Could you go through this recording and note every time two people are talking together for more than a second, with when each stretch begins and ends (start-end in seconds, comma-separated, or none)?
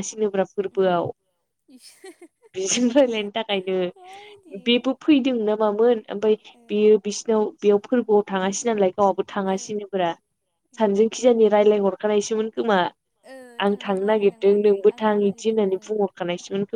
13.7-15.7